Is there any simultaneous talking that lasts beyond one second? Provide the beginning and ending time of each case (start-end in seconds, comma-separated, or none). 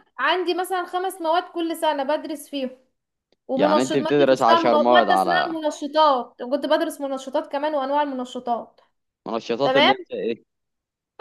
3.6-5.6